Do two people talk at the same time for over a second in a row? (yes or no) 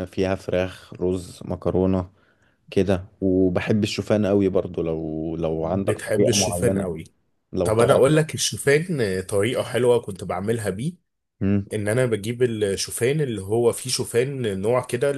yes